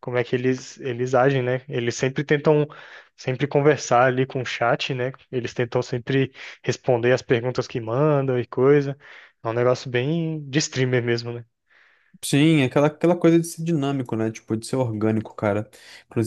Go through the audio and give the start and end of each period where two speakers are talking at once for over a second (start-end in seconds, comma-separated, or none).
none